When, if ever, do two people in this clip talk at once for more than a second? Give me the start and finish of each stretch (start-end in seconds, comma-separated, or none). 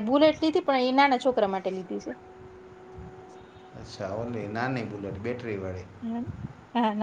none